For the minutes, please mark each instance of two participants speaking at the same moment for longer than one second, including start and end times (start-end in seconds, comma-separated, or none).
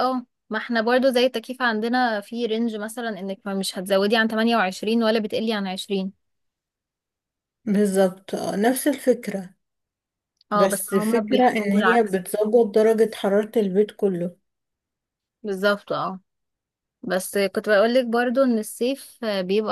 10.5-12.2